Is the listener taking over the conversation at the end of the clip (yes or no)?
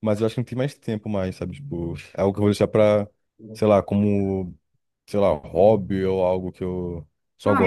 yes